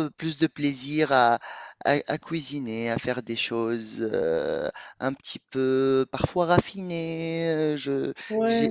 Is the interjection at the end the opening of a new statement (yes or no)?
yes